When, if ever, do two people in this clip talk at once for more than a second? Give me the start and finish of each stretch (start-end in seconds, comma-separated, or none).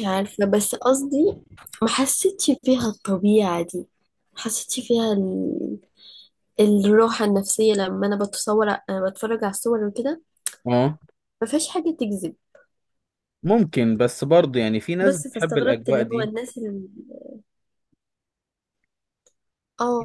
15.0-16.3